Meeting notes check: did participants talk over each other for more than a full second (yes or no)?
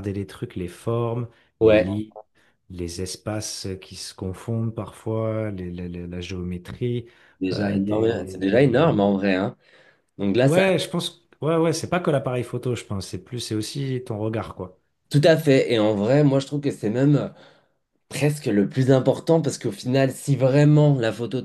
yes